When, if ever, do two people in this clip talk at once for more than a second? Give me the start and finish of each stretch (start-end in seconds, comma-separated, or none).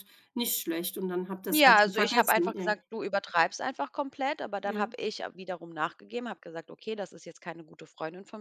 1.5-2.8